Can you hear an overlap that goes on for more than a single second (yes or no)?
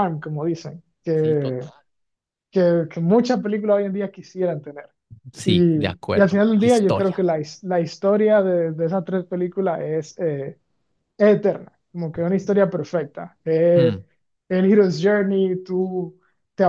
yes